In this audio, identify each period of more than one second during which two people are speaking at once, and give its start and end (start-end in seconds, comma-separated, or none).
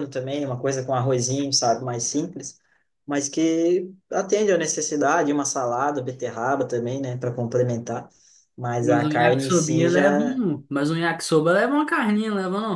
8.8-10.4